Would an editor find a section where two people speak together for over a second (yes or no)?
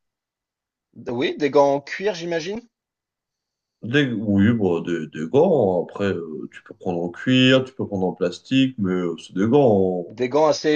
no